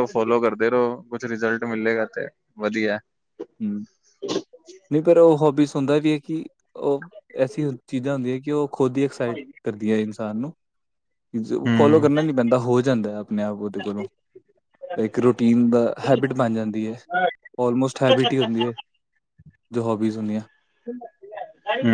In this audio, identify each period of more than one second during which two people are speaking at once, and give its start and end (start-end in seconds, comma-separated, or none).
none